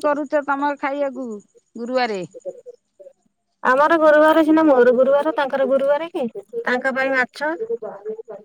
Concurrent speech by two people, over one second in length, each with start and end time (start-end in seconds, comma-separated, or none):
none